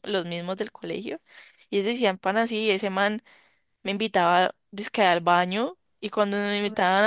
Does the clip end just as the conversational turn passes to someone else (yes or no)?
no